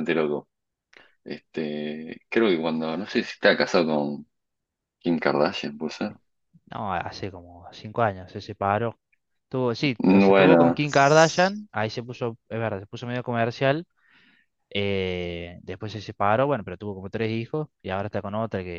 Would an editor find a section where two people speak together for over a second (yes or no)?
yes